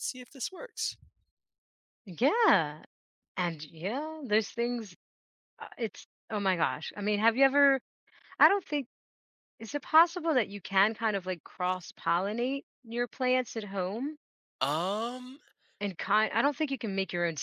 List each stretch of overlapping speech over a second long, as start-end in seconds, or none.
none